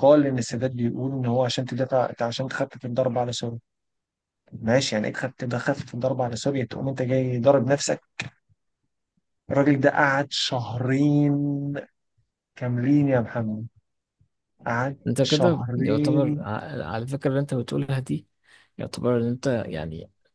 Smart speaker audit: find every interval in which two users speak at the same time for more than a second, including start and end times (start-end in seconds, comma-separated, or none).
15.1-16.4